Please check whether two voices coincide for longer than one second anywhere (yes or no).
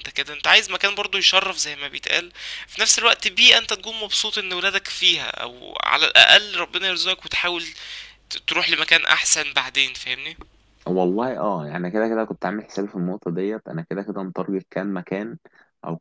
no